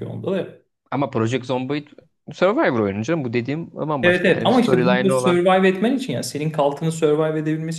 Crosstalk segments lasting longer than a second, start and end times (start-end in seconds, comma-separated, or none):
4.0-5.4